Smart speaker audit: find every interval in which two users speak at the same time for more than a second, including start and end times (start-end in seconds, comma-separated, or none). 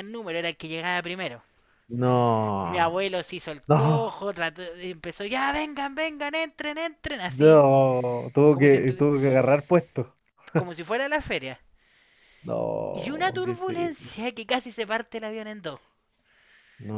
12.9-14.1